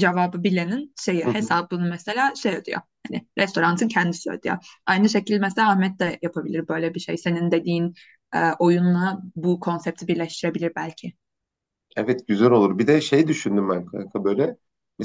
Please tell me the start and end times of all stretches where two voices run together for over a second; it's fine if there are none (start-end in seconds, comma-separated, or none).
none